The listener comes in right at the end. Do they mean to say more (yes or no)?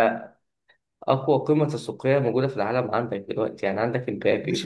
yes